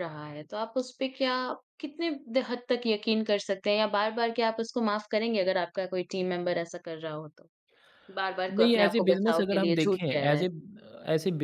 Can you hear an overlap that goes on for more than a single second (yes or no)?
yes